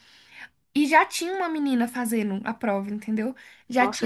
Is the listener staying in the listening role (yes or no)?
yes